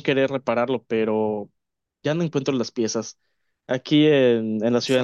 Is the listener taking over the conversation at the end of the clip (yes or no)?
no